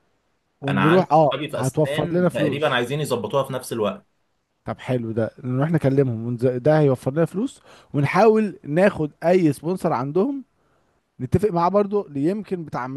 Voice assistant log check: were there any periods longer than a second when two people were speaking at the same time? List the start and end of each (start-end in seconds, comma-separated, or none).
0.7-2.8